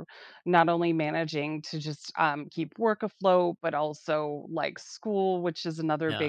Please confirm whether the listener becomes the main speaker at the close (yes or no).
no